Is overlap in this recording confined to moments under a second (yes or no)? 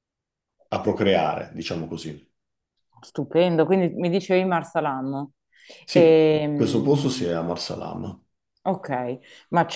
no